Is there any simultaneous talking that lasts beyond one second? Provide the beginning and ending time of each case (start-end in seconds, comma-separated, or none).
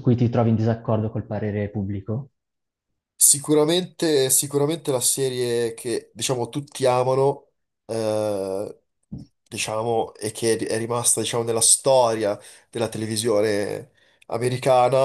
none